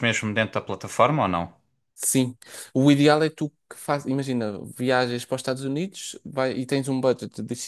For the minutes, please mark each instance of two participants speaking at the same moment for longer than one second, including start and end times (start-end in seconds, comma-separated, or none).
none